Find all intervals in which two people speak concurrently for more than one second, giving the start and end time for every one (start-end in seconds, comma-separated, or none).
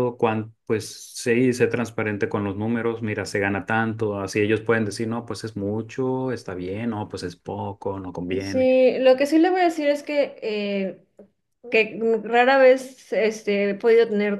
none